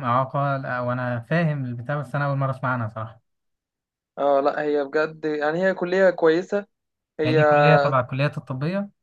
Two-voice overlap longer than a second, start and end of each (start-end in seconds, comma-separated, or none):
none